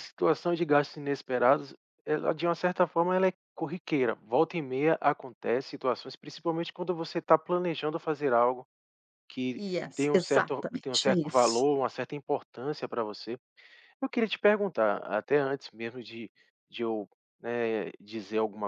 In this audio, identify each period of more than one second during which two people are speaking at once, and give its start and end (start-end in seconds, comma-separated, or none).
9.6-11.6